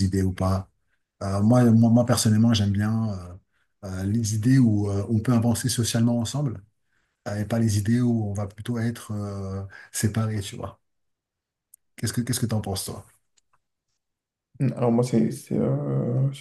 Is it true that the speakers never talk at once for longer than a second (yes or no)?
yes